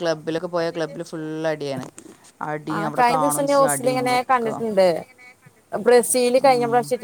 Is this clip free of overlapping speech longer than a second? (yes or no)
no